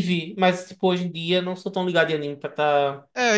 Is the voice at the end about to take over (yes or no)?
yes